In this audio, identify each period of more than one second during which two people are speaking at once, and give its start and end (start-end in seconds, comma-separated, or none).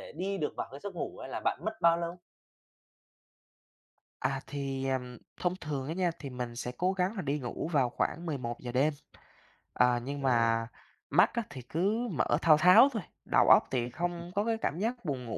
none